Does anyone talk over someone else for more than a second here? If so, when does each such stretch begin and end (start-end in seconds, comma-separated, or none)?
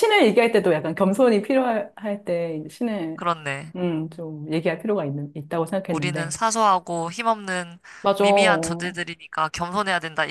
none